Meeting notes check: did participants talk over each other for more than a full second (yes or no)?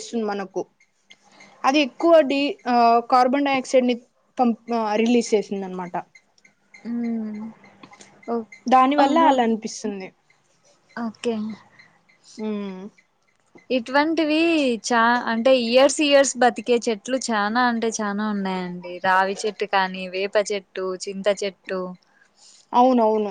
no